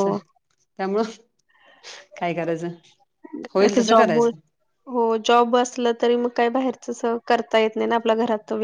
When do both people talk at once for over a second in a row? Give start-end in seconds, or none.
none